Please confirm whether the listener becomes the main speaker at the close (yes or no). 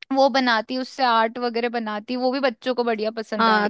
yes